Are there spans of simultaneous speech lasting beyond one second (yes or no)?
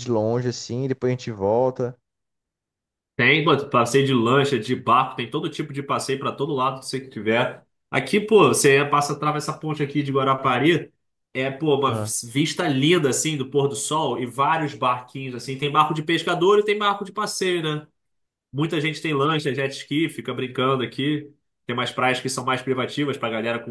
no